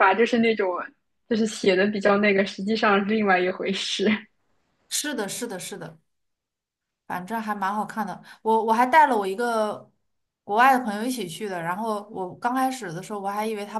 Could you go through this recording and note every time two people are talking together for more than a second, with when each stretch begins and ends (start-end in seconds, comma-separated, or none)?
none